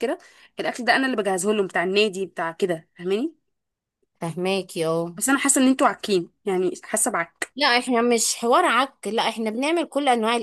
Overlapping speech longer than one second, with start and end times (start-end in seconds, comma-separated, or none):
none